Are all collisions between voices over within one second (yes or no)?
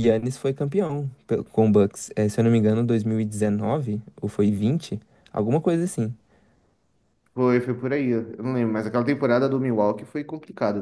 yes